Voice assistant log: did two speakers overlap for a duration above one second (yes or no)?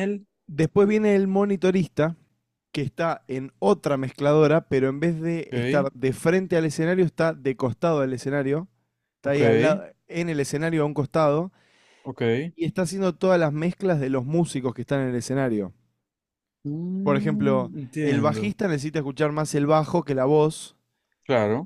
yes